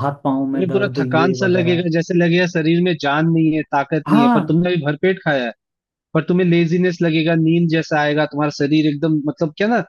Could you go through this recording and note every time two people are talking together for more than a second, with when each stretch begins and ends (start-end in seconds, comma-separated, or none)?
0.5-1.8